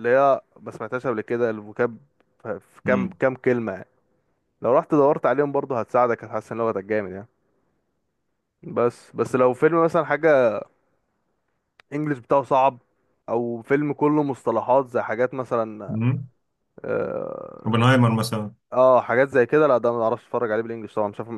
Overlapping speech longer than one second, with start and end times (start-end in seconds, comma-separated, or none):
none